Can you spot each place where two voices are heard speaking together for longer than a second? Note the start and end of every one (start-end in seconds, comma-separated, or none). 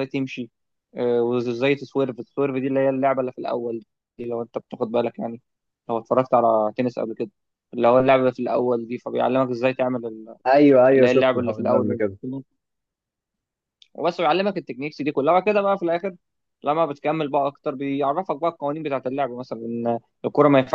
10.9-12.2